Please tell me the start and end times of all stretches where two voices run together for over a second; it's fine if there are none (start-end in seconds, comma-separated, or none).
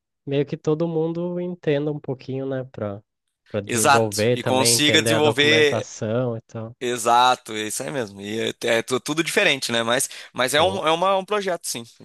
3.7-5.9